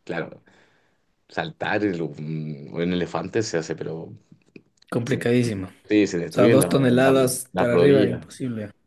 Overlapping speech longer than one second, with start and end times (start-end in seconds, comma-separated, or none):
6.3-8.3